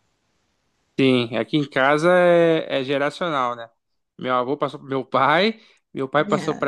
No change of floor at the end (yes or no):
yes